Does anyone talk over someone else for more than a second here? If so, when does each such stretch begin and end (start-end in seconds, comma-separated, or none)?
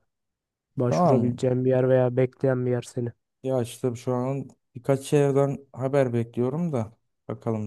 none